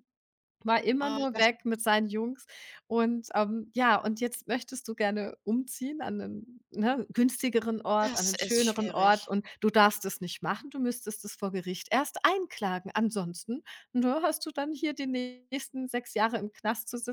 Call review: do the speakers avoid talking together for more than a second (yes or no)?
no